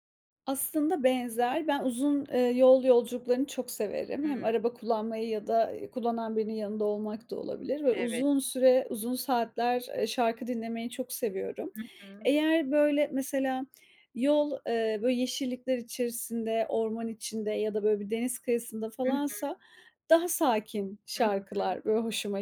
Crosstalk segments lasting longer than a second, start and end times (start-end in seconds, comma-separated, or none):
none